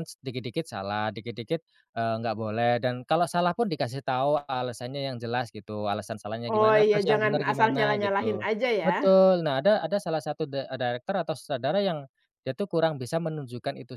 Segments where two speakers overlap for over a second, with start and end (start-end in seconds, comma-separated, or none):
6.5-8.9